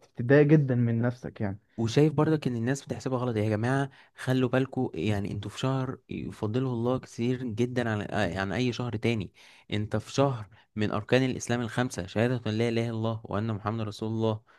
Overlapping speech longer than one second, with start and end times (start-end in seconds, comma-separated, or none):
none